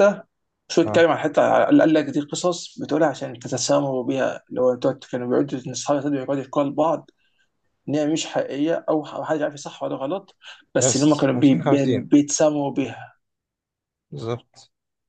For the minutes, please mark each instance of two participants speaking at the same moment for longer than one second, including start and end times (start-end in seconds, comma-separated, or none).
10.8-12.1